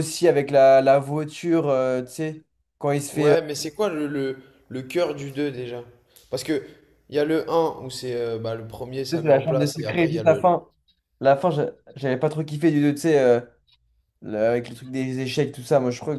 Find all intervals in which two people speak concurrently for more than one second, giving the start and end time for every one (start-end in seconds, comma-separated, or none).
9.1-10.6